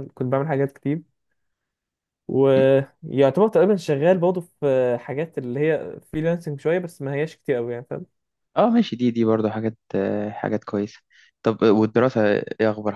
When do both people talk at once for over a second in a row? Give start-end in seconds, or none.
none